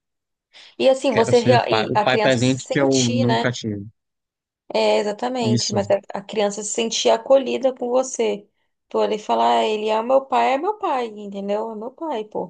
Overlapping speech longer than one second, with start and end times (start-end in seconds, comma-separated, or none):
1.1-3.5